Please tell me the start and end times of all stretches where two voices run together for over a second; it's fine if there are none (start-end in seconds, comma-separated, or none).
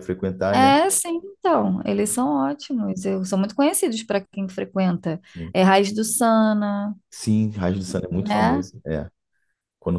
none